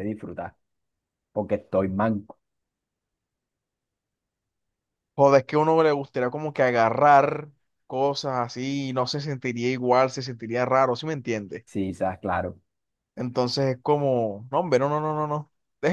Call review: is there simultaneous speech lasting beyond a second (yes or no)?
no